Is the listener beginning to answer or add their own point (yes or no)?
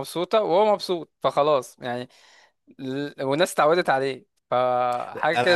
yes